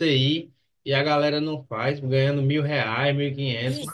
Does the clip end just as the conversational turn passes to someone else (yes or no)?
yes